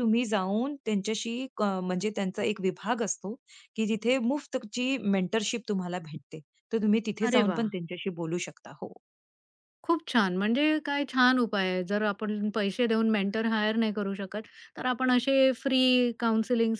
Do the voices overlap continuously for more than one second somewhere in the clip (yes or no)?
no